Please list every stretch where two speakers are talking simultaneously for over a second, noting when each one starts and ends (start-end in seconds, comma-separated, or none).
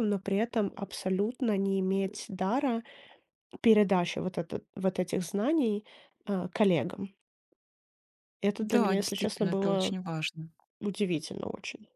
8.6-10.0